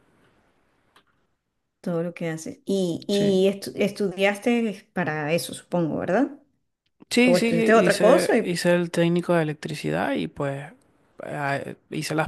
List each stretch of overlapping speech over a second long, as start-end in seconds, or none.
7.2-8.6